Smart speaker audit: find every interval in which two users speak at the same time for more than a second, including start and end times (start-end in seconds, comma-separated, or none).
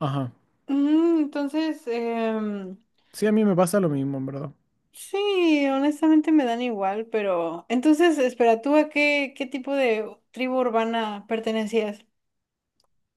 none